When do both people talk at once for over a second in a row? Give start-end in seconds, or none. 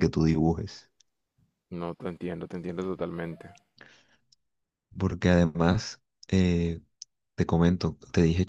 none